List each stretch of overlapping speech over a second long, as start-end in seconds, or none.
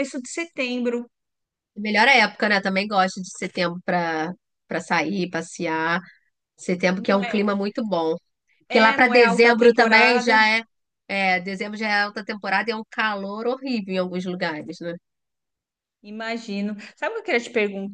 8.7-10.4